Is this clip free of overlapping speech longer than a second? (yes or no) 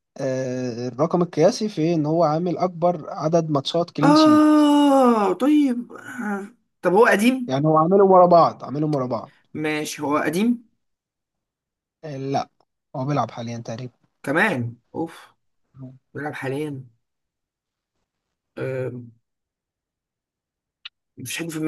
yes